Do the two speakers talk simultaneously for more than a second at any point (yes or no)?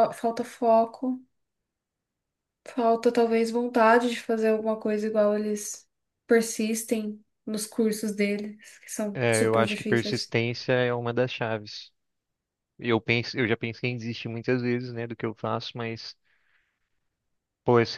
yes